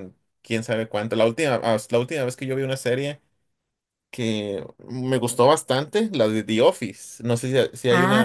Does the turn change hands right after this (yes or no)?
yes